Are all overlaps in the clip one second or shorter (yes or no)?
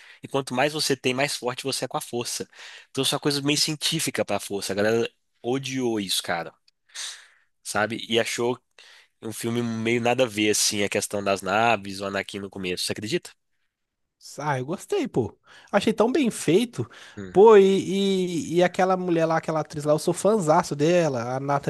yes